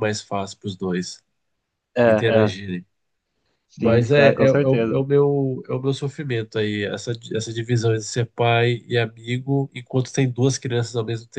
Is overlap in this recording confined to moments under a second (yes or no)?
no